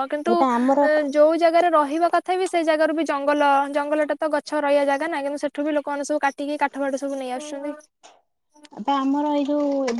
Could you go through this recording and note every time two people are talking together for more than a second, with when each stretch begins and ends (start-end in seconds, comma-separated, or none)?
none